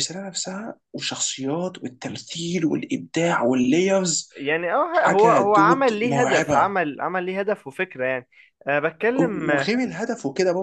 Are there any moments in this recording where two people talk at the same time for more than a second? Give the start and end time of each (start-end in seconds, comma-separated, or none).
4.9-6.7